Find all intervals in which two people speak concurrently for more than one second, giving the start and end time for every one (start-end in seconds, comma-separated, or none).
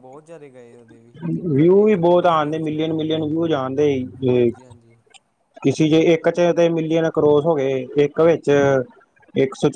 1.8-3.2